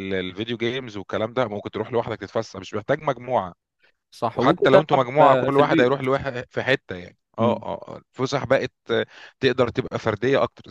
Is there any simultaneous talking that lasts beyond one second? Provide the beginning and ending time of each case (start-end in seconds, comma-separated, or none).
4.3-6.1